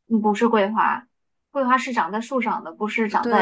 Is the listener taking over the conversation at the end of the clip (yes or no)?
yes